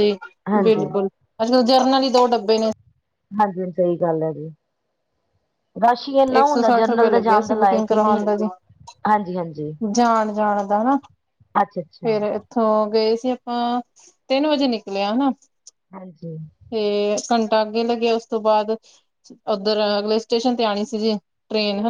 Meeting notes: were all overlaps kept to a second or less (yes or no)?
no